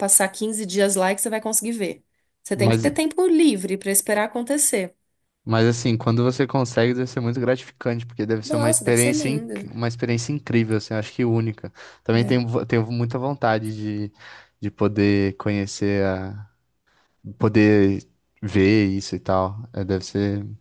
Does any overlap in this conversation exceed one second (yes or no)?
yes